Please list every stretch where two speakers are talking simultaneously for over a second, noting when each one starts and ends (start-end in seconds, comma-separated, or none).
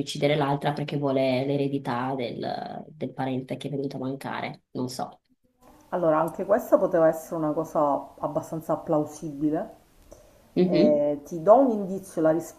none